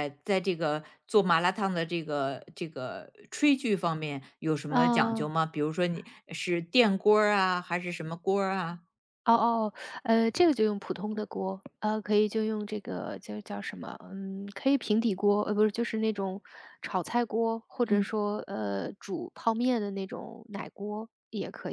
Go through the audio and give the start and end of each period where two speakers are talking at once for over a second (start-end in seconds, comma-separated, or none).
none